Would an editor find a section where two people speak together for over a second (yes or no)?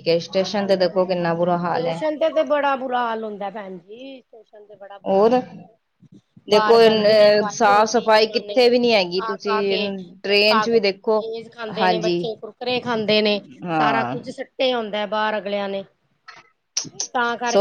yes